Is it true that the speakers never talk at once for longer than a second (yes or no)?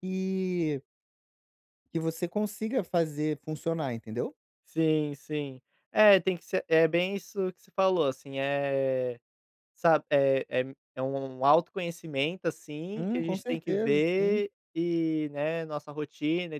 no